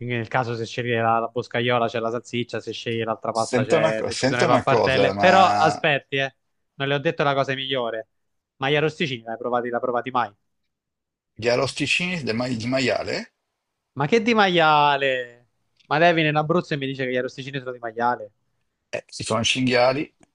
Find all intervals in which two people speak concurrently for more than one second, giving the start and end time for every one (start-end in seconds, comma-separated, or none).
3.4-5.8